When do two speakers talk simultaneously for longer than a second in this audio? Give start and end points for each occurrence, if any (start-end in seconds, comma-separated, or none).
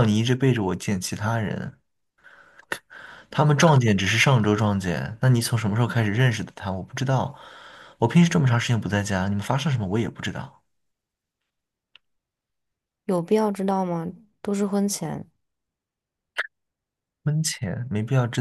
none